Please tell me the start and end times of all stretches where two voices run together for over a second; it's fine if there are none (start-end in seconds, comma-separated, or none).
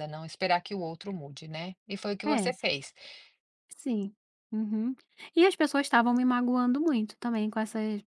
none